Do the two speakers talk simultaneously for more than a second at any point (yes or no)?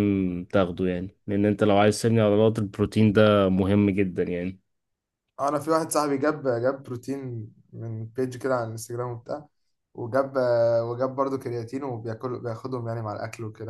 no